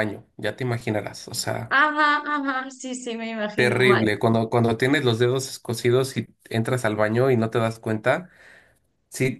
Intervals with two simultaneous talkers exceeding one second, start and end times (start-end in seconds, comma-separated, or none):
none